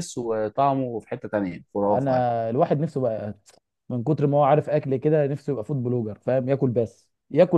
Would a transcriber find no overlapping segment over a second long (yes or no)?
yes